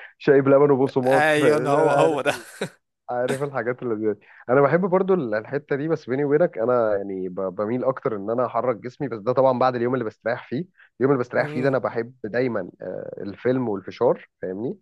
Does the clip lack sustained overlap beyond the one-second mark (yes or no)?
no